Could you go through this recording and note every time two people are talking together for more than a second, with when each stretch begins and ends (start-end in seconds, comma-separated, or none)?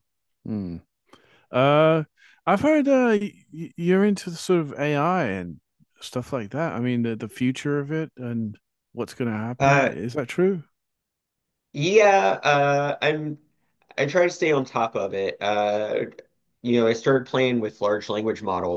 none